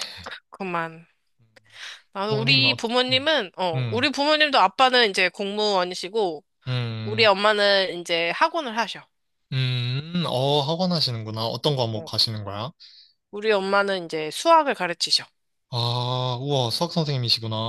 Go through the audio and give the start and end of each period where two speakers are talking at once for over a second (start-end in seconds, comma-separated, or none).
none